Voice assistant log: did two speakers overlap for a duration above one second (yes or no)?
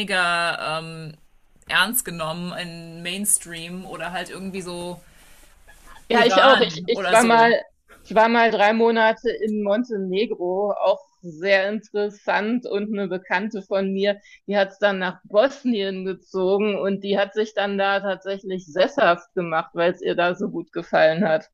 yes